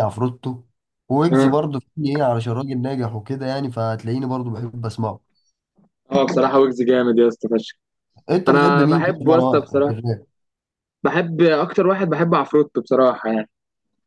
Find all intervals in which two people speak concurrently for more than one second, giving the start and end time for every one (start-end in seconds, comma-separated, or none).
8.5-10.0